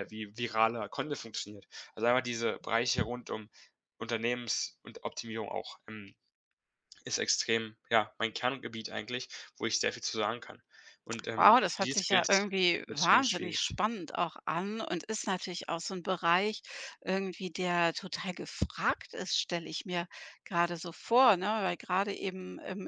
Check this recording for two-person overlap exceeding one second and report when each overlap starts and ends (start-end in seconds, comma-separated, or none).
11.3-13.6